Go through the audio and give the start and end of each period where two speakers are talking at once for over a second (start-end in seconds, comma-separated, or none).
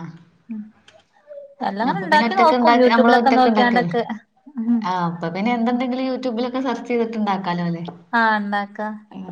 1.9-3.9